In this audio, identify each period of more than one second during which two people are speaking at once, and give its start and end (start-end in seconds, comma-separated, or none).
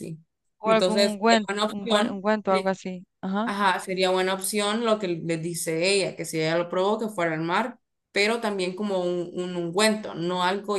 0.6-2.8